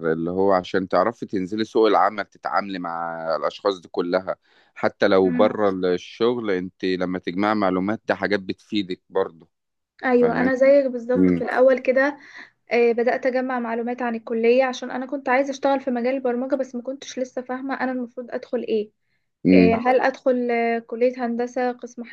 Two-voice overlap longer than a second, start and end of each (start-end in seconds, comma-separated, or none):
none